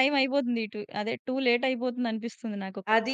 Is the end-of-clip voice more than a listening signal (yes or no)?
yes